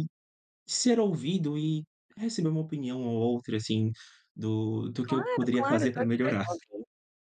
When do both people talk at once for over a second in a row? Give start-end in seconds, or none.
5.0-6.5